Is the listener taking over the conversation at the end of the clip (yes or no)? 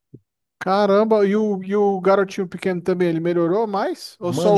yes